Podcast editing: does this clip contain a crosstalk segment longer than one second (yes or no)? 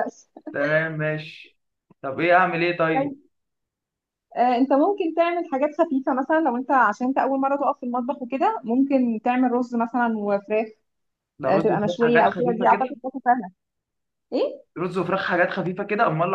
yes